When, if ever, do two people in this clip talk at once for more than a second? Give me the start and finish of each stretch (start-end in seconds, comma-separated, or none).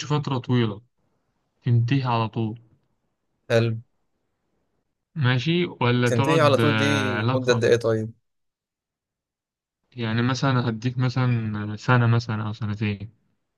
6.0-7.6